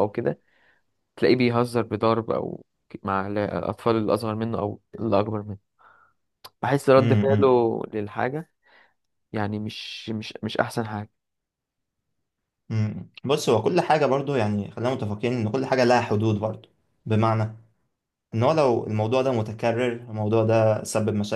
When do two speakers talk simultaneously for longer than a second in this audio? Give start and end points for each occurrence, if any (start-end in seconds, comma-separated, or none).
none